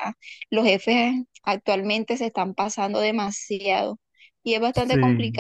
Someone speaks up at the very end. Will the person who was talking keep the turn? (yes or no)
yes